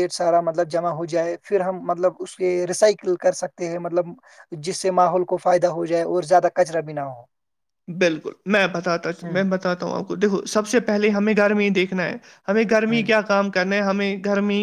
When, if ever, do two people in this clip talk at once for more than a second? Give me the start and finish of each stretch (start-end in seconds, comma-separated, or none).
none